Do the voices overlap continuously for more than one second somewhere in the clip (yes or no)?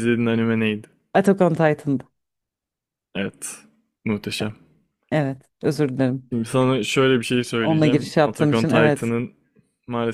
yes